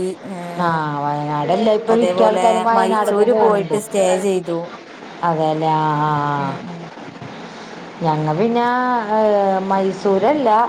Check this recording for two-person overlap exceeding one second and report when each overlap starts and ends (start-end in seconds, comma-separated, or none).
1.9-3.8